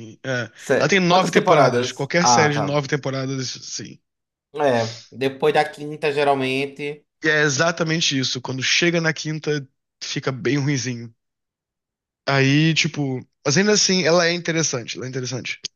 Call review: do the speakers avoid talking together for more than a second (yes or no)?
no